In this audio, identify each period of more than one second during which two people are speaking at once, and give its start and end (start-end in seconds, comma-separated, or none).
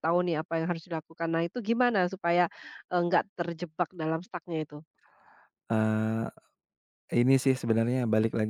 none